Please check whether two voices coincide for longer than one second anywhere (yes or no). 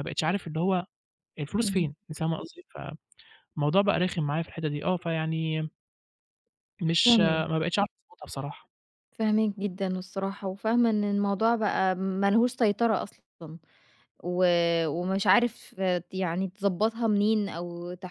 no